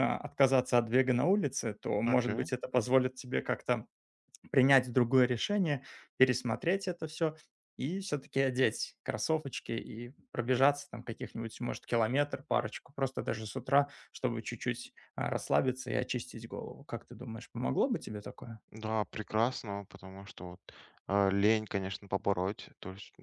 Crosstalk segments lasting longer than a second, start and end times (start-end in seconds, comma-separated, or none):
none